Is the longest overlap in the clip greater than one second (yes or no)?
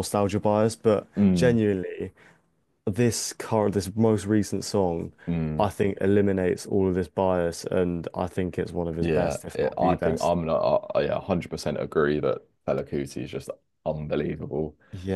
yes